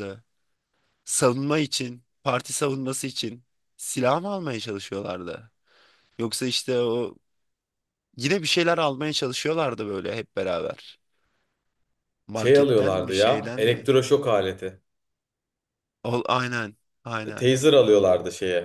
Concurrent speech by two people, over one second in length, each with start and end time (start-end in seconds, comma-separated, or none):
12.3-13.9